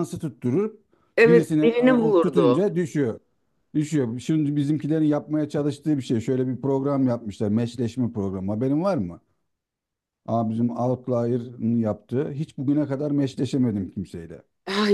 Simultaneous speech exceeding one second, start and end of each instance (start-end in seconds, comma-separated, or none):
1.3-2.6